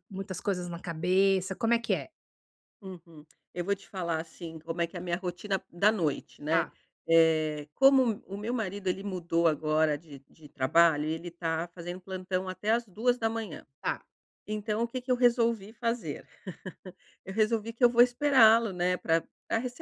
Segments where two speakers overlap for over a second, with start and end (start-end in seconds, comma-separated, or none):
none